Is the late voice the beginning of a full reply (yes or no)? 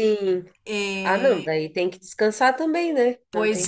yes